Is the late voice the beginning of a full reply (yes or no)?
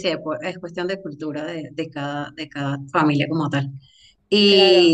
no